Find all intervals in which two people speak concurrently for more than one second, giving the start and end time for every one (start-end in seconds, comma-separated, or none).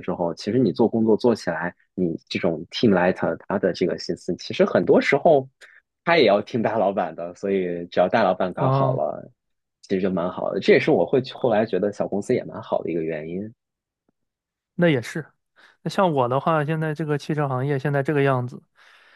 none